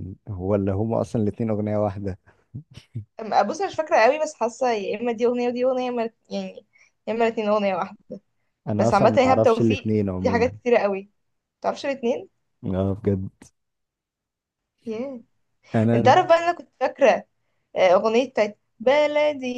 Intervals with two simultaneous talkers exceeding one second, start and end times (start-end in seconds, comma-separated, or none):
8.8-10.6